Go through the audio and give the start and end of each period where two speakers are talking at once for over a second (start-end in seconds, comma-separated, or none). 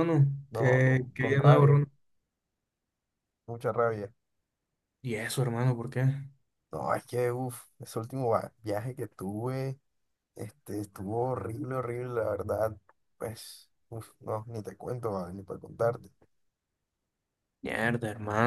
0.5-1.8